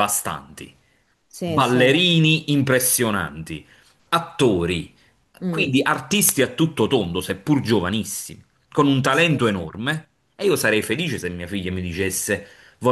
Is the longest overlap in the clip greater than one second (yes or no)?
no